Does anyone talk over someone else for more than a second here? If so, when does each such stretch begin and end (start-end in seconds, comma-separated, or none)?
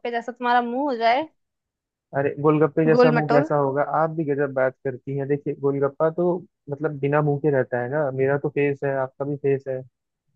none